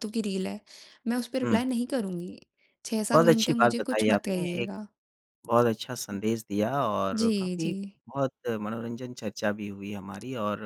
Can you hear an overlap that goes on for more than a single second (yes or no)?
yes